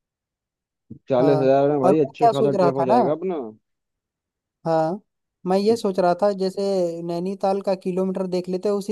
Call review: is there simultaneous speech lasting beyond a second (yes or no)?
yes